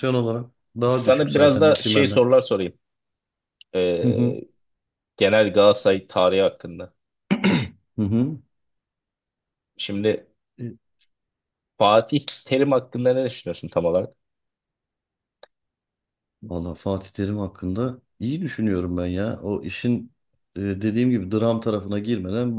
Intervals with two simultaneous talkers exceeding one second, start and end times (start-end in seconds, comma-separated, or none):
0.9-2.2